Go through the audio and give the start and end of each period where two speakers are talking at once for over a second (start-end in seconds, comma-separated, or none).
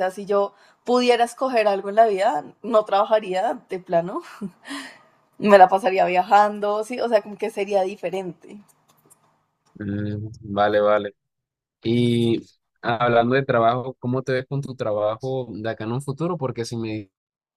none